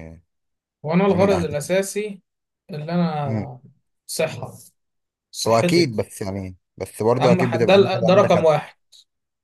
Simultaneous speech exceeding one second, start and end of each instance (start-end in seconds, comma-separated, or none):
7.2-8.5